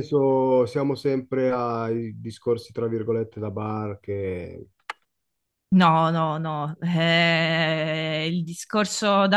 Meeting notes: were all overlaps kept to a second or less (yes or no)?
yes